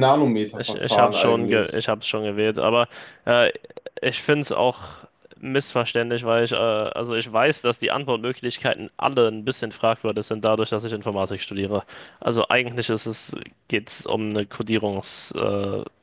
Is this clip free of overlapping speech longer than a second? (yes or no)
no